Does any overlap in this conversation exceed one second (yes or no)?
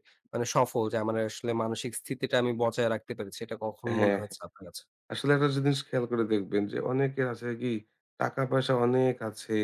no